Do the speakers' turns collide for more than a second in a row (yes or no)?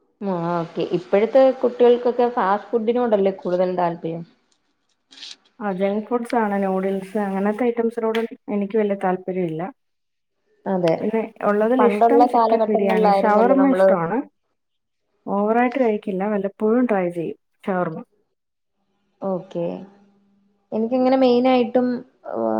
yes